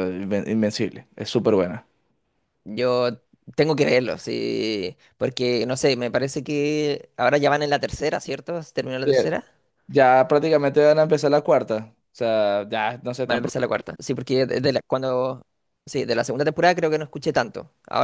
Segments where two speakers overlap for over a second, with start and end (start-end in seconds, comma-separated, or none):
none